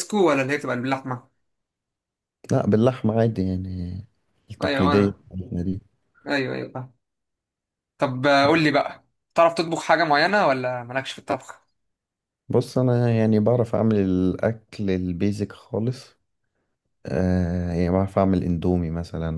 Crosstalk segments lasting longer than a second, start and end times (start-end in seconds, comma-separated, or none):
none